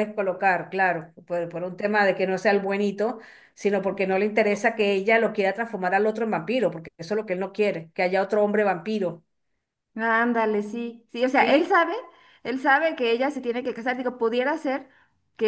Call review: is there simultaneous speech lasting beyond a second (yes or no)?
no